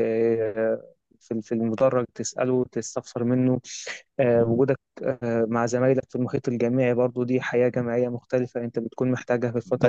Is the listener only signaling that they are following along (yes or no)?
no